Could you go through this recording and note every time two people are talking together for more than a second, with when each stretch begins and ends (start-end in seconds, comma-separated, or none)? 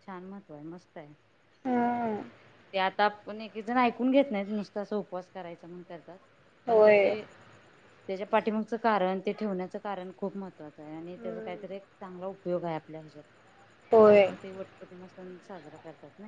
none